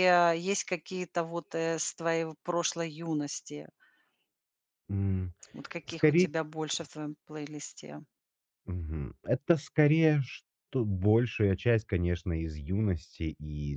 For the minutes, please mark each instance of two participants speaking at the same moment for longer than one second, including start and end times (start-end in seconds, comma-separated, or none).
none